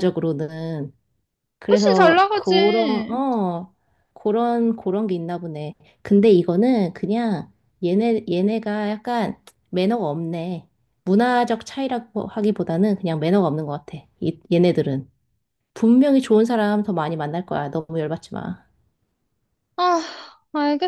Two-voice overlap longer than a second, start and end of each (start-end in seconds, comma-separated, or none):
1.7-3.2